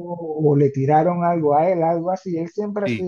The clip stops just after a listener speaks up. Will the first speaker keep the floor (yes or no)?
yes